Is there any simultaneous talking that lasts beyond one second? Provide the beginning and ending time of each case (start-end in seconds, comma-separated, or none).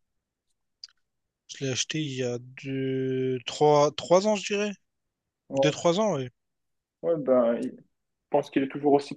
none